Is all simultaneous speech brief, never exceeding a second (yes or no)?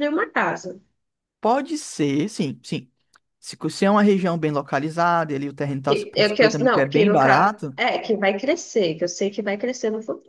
no